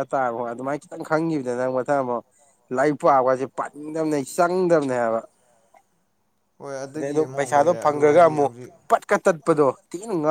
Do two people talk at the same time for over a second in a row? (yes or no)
yes